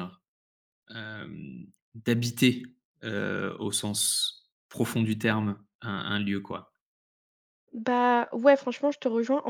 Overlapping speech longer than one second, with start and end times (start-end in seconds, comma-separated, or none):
none